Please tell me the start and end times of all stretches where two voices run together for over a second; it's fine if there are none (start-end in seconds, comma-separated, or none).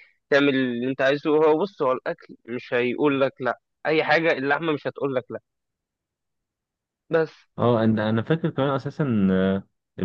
none